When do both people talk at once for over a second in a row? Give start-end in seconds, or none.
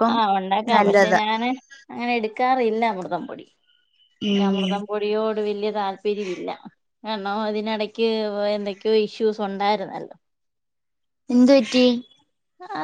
none